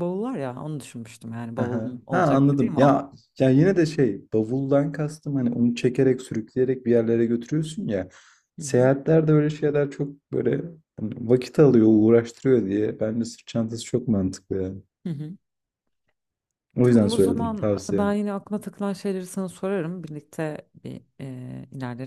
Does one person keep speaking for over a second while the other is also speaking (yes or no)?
yes